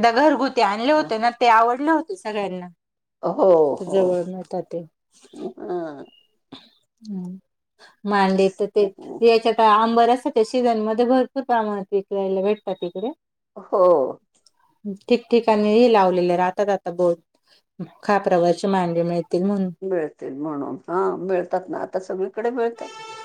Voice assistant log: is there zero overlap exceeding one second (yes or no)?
yes